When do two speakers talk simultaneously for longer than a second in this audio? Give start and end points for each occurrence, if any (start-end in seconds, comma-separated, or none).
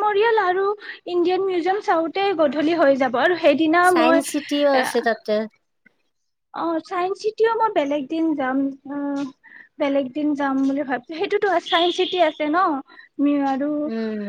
none